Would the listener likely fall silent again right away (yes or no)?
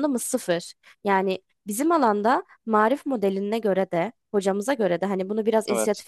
yes